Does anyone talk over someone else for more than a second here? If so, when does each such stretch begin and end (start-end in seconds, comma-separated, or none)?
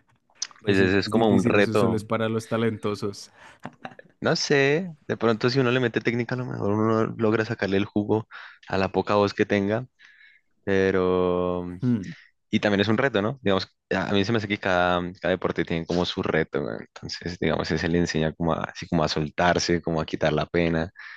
0.7-2.0